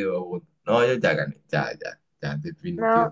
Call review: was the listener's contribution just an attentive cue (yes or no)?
no